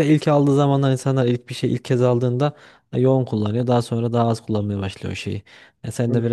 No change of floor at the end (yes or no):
yes